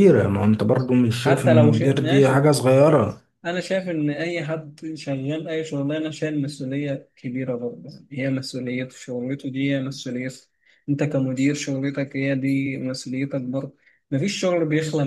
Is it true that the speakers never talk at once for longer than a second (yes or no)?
no